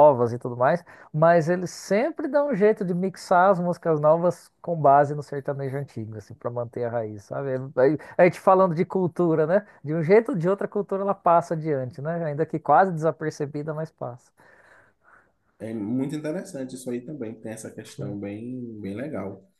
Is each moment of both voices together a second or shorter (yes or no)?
yes